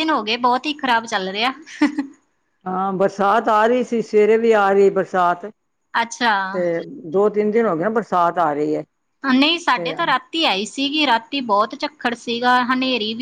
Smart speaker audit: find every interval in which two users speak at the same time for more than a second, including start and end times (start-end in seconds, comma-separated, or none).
none